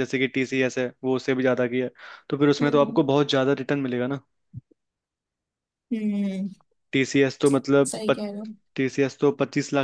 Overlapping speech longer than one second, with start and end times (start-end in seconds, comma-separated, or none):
none